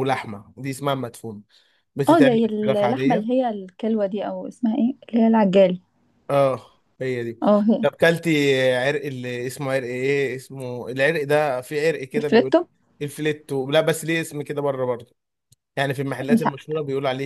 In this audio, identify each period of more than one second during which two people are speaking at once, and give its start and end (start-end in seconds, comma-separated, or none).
2.1-3.3